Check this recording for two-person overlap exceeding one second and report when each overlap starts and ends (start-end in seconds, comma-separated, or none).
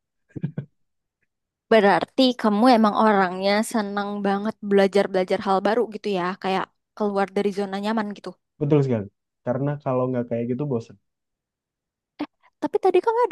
none